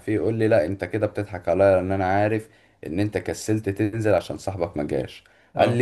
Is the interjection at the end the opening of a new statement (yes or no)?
no